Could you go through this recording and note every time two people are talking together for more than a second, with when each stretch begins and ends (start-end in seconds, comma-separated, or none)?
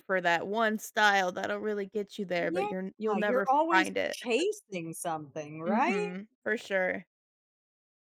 2.4-4.2